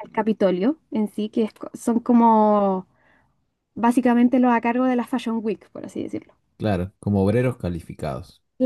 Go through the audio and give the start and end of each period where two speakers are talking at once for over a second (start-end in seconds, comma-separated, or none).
none